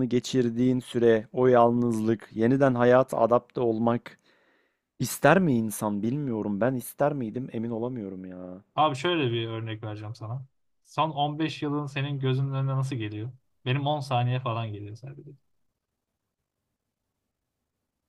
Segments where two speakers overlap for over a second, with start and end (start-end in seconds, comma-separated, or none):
none